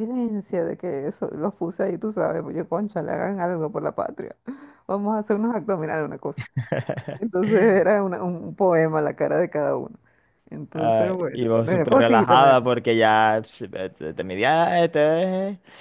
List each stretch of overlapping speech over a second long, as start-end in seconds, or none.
10.7-12.6